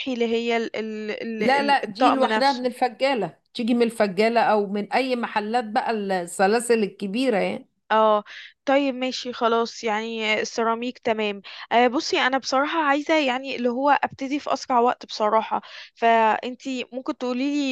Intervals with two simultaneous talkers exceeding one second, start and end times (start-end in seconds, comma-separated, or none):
1.4-2.7